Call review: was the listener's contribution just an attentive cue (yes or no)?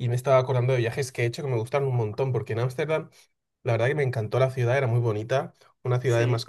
yes